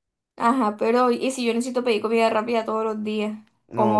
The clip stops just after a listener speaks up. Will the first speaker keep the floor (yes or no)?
no